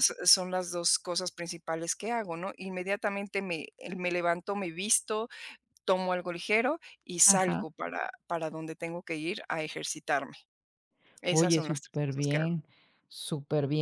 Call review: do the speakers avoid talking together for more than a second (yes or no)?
no